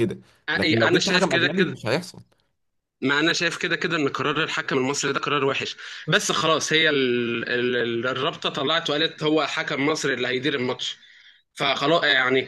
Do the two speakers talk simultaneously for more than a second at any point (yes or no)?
yes